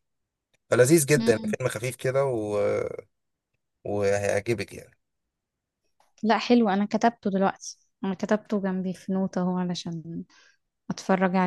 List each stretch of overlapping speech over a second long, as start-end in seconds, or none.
none